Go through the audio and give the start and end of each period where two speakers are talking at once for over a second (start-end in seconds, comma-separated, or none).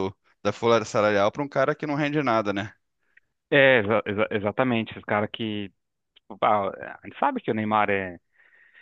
none